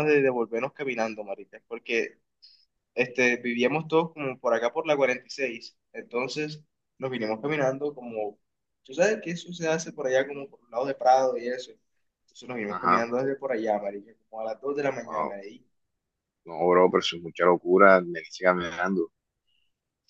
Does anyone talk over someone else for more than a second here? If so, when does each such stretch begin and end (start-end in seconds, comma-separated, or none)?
none